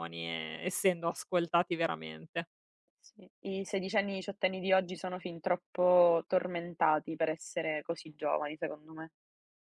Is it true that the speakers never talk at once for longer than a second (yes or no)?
yes